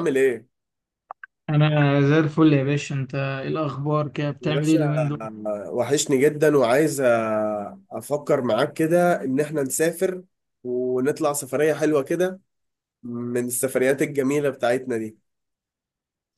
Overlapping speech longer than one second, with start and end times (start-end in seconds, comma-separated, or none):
none